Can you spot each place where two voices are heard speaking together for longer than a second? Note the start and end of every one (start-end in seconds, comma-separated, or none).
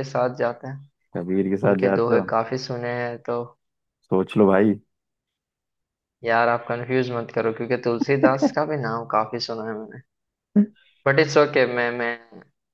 none